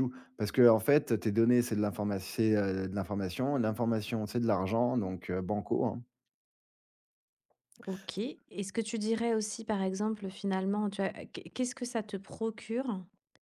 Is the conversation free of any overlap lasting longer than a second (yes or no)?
yes